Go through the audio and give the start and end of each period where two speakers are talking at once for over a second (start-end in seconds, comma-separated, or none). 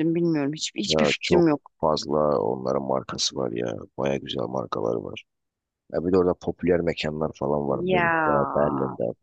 none